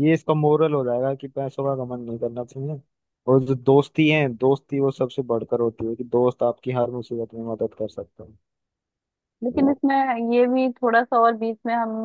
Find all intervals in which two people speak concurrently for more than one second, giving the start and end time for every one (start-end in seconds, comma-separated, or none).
none